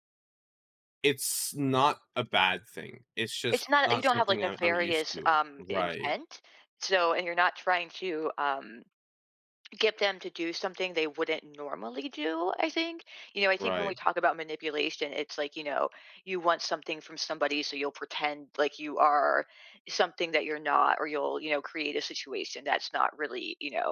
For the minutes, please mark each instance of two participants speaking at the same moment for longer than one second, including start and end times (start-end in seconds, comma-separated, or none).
3.5-6.2